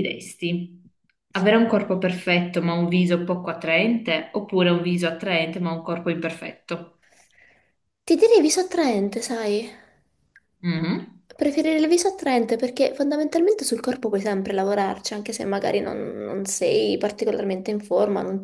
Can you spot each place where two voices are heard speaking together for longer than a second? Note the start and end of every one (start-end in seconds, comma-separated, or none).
none